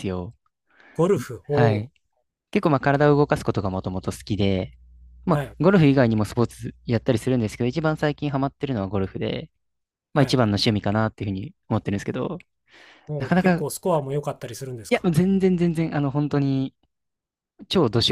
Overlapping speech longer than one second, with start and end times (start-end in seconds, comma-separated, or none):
none